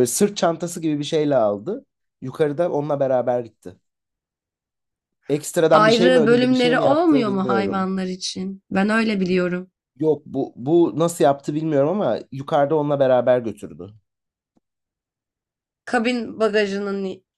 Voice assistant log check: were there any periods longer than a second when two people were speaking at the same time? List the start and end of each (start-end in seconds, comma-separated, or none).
5.7-7.9